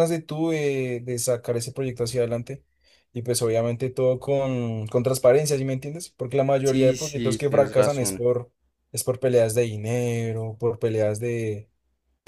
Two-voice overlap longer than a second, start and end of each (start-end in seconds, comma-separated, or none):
6.6-8.3